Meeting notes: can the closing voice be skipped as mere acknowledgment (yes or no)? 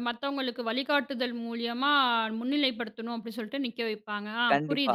no